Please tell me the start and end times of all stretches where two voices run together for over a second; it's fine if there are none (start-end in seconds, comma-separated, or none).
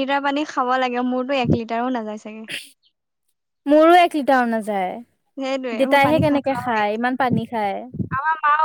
5.4-6.8